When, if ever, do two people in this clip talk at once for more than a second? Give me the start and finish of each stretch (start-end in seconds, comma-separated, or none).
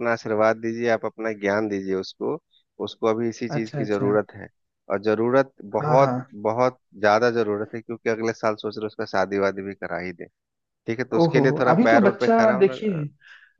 11.2-13.0